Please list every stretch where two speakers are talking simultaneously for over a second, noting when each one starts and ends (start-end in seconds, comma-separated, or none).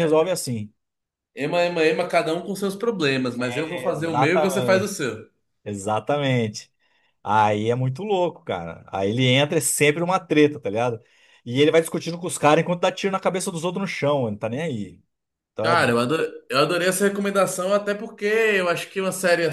3.7-4.9